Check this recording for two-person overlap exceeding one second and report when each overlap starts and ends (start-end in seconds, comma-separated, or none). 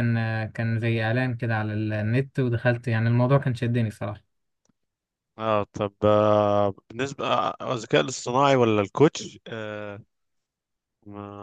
none